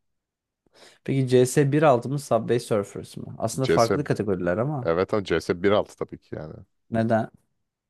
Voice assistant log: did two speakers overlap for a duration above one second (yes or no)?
no